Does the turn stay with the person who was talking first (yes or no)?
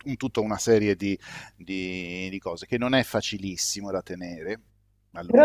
no